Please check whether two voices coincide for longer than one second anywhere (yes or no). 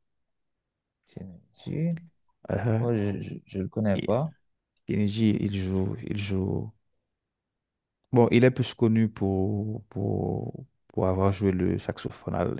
no